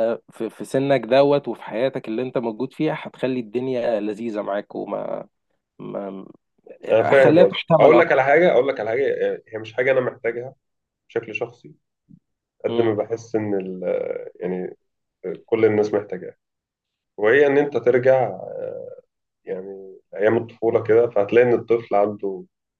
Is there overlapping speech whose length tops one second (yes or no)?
yes